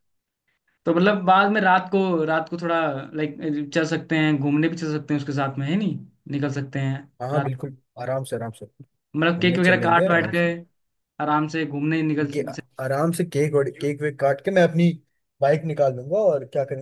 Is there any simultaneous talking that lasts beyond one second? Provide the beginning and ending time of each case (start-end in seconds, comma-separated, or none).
9.2-10.4